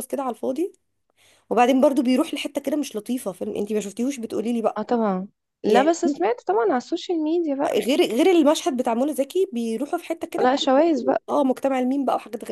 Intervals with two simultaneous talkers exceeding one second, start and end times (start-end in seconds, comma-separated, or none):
none